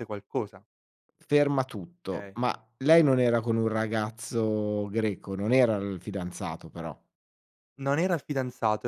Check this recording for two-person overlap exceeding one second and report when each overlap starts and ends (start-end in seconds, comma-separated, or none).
none